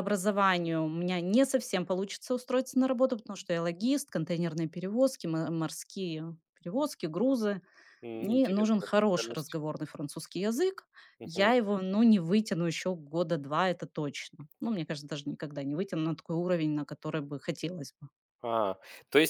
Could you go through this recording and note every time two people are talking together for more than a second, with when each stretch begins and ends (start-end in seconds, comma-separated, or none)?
8.2-9.6